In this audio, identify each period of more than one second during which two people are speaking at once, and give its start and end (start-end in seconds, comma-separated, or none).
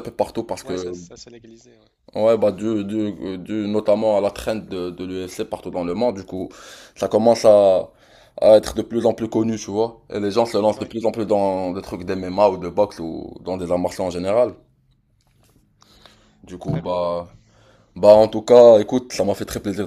none